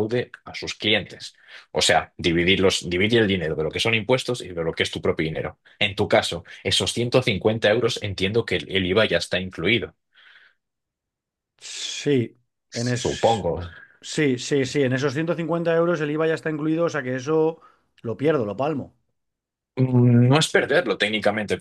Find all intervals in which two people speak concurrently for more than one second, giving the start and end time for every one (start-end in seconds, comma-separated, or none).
none